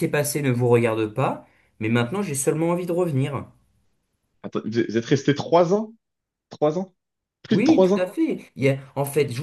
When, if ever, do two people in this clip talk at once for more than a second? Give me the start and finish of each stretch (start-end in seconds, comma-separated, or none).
none